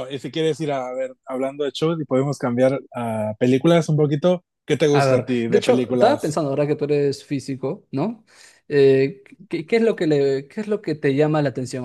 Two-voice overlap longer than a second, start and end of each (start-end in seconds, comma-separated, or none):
4.9-6.4